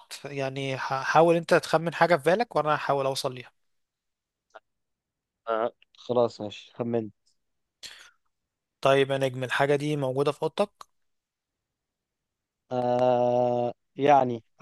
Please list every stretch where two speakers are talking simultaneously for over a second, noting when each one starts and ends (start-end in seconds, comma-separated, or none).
none